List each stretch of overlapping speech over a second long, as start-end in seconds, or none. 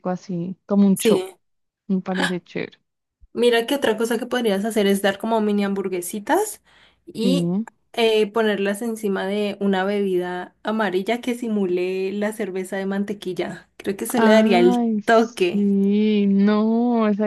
14.2-15.7